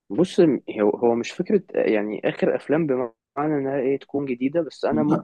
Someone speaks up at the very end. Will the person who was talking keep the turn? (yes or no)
yes